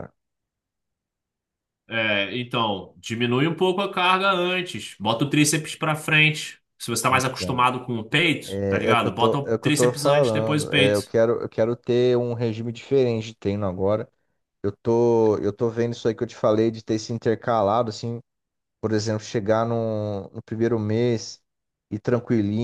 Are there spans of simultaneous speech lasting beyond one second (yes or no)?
yes